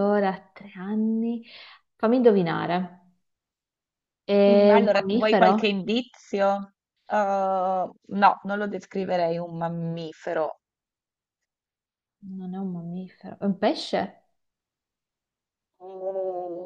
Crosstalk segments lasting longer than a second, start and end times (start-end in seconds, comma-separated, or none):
4.5-5.8